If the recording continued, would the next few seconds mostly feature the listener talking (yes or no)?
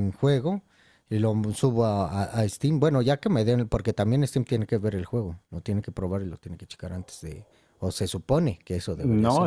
yes